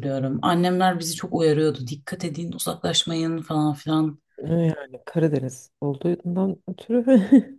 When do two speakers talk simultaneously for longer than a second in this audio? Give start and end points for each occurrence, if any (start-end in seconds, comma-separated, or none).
none